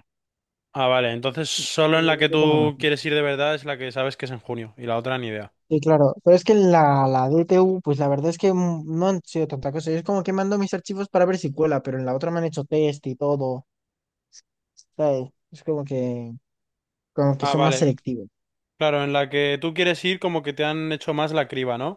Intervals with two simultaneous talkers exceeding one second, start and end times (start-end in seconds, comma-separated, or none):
none